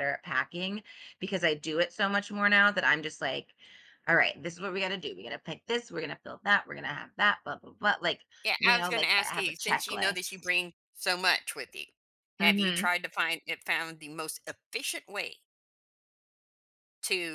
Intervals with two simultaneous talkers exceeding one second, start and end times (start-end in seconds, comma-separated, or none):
8.6-10.5